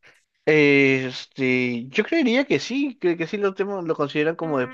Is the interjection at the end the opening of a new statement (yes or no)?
yes